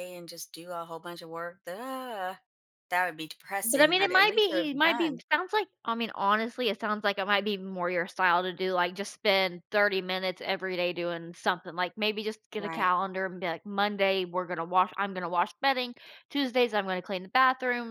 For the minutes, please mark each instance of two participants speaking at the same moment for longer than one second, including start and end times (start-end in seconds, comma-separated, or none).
3.6-5.2